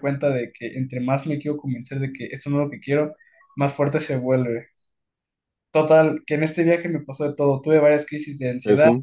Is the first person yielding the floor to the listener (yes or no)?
no